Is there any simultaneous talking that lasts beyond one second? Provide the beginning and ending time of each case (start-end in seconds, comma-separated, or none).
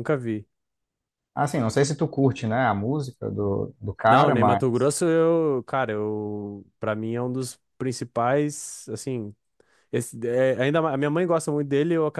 none